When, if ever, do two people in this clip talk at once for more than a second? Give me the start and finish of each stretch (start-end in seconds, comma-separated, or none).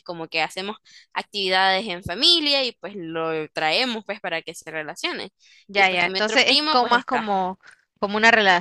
5.7-7.3